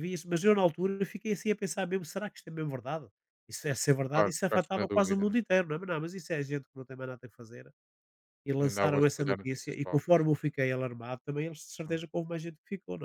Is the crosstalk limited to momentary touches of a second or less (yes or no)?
no